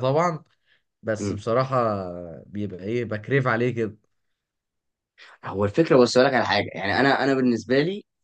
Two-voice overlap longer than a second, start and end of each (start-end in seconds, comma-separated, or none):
none